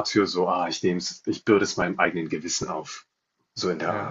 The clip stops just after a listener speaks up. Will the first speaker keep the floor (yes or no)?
no